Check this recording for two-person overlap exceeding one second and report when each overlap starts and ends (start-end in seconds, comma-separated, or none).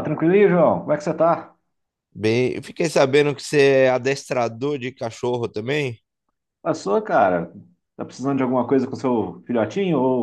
none